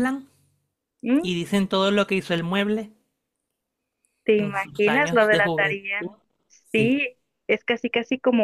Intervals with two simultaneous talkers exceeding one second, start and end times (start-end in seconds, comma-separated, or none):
4.3-6.0